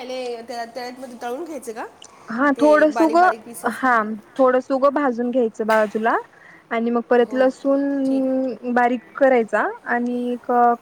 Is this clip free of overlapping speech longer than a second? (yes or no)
yes